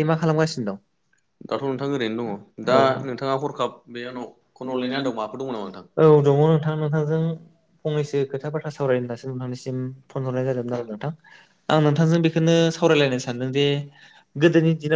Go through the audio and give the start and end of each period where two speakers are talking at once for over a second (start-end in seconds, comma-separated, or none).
4.5-5.8